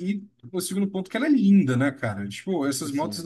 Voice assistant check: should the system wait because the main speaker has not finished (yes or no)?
yes